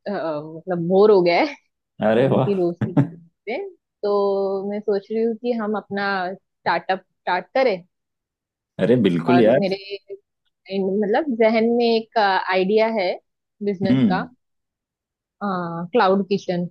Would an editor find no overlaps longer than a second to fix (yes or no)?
yes